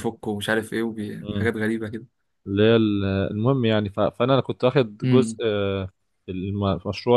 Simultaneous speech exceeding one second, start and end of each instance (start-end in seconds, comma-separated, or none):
none